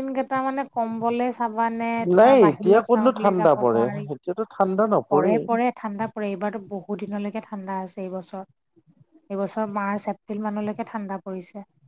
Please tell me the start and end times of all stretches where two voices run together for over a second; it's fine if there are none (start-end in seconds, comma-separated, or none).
2.2-4.1